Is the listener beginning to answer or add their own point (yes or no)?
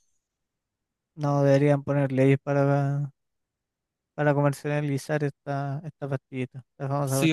yes